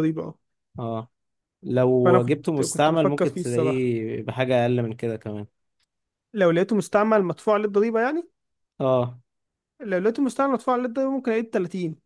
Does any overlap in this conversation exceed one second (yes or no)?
yes